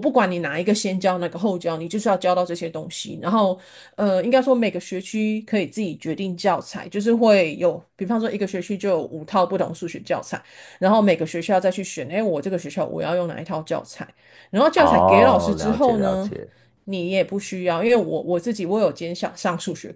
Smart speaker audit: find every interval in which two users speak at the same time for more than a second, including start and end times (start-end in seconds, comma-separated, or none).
14.8-16.3